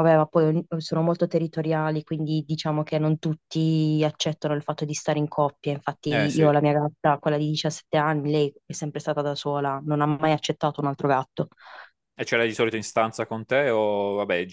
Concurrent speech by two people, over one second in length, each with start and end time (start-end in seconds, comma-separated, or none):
none